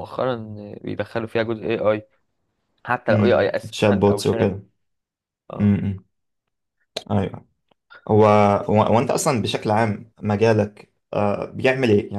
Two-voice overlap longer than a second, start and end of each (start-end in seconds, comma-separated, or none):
3.1-4.6